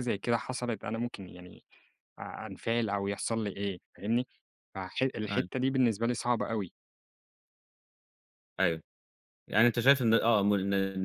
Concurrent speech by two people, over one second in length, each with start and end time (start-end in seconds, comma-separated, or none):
none